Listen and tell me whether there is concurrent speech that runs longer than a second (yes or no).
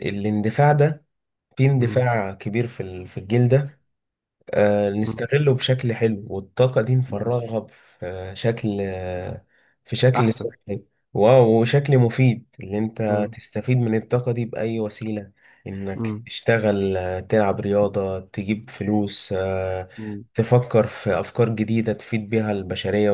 no